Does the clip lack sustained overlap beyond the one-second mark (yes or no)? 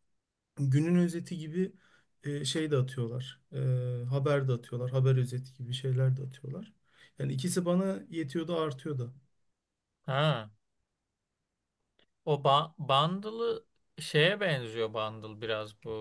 yes